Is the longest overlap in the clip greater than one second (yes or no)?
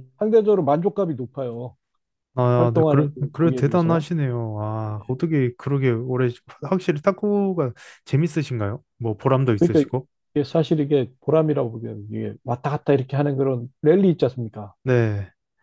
yes